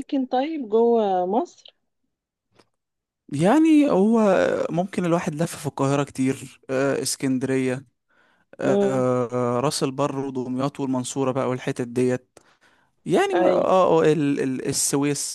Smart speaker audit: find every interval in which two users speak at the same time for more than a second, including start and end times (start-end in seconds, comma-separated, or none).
none